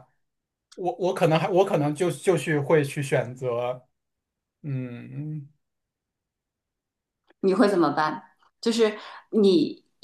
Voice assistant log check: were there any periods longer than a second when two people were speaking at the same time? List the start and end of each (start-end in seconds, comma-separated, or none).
none